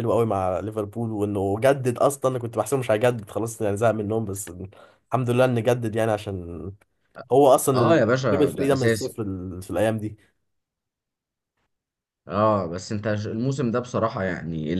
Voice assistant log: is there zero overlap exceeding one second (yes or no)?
no